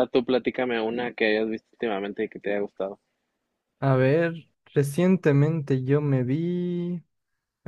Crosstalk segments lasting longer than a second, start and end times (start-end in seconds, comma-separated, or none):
none